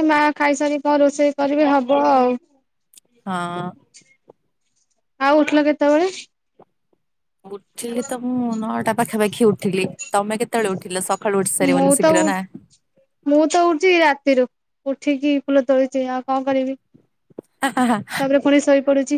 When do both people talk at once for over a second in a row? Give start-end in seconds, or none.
none